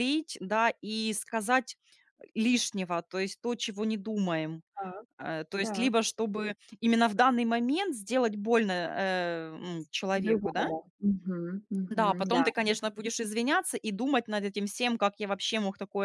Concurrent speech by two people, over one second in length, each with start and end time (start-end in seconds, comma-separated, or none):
none